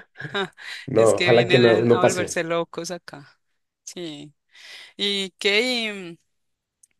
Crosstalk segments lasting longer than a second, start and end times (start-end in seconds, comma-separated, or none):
1.0-2.4